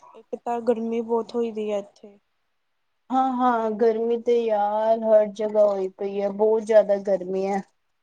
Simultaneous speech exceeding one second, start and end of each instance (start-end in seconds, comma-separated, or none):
none